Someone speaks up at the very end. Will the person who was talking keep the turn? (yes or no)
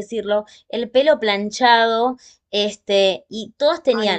yes